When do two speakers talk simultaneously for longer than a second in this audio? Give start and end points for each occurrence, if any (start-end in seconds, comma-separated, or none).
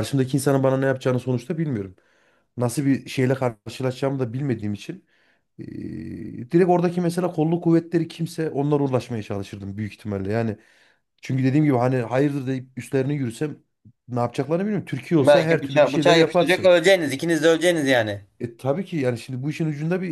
15.2-16.7